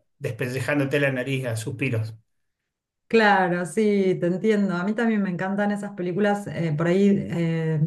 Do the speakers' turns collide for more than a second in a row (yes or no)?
no